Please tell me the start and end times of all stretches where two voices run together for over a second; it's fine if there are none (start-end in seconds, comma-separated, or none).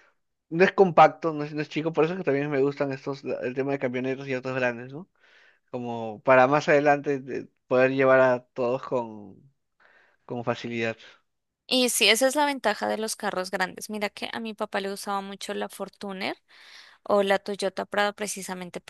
none